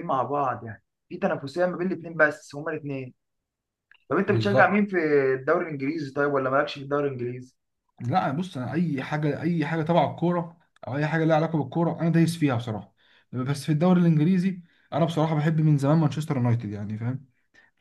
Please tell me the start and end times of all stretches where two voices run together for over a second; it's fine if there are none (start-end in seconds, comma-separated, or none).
none